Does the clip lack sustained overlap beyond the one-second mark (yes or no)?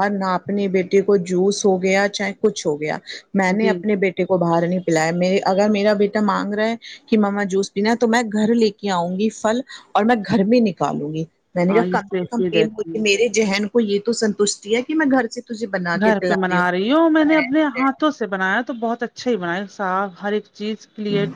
no